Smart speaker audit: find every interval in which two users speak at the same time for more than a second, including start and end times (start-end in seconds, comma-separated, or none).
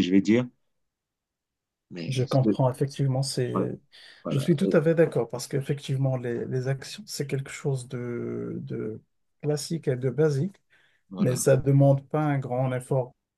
none